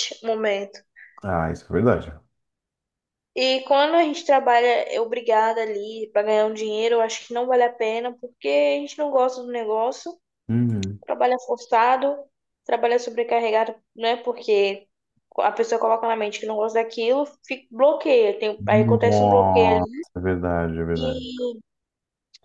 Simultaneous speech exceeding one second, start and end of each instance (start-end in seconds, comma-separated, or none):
18.6-20.1